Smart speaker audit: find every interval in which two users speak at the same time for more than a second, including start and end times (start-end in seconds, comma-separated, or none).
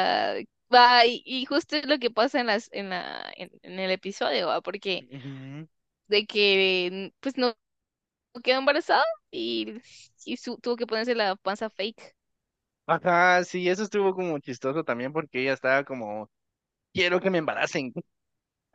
none